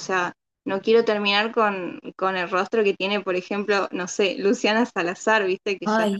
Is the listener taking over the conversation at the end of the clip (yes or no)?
yes